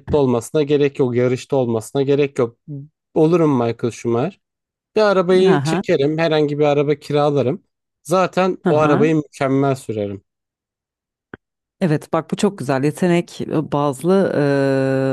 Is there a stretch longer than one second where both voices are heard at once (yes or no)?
no